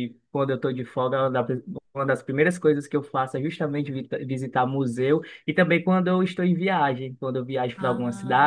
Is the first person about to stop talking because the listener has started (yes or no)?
no